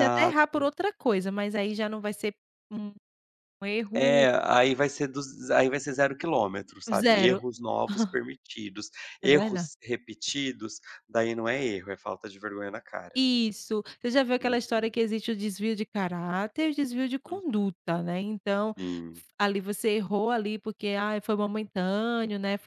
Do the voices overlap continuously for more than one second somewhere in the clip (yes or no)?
no